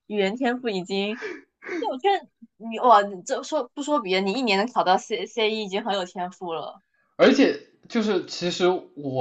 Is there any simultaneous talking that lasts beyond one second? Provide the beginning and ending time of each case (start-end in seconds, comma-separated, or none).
none